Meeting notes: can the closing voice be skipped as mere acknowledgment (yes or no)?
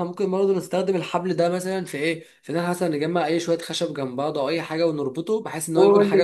no